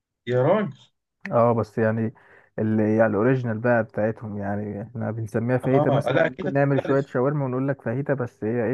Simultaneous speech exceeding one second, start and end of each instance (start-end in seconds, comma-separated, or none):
5.6-7.1